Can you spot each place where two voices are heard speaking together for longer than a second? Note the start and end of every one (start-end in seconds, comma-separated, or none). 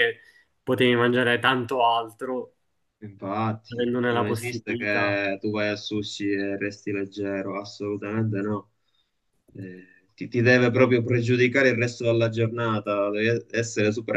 3.7-5.2